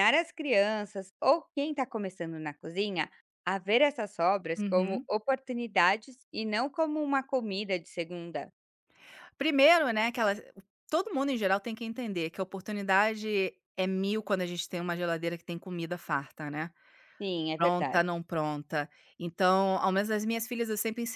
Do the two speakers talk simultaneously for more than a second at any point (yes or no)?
no